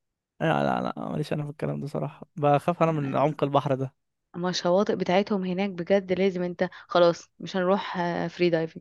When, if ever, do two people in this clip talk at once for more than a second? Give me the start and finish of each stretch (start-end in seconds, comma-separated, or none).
none